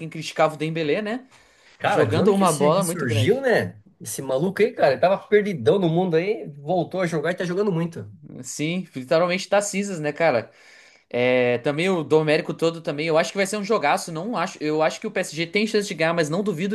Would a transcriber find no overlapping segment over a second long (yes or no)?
no